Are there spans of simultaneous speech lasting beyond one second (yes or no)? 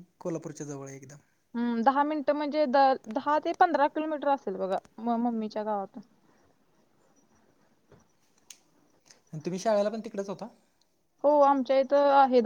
no